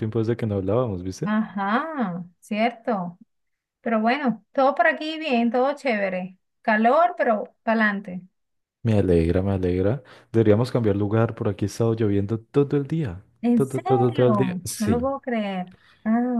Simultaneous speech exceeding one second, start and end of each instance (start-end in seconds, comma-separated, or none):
13.4-15.0